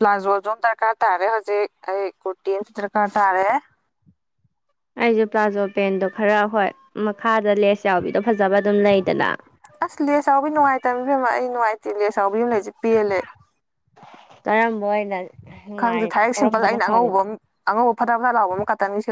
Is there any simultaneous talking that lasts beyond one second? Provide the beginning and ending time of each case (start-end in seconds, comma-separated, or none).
15.8-17.2